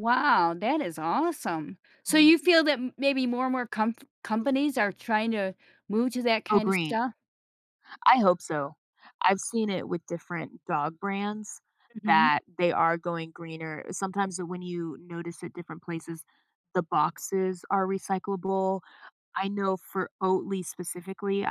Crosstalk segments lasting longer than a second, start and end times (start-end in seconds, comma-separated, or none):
none